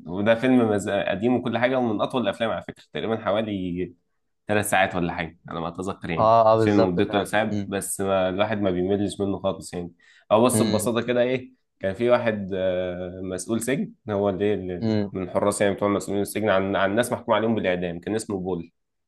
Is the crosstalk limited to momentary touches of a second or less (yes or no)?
no